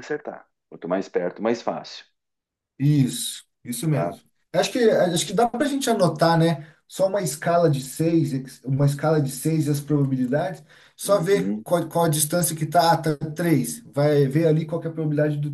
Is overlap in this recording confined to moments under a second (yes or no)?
yes